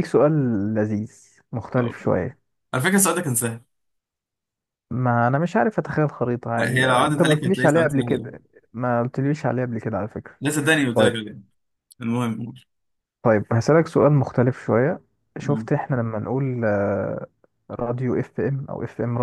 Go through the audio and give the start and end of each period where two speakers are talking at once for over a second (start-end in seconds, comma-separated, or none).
6.6-8.3